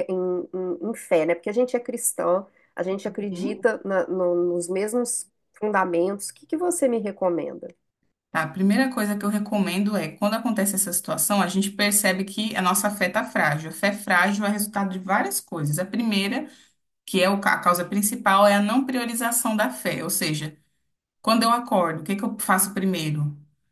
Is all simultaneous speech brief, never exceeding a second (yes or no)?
yes